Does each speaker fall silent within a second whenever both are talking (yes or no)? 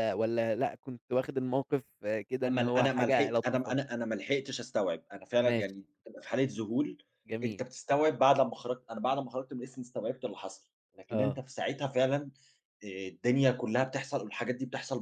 no